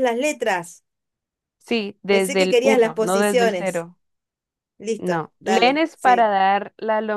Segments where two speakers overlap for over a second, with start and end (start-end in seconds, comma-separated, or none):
2.1-3.9, 5.0-6.3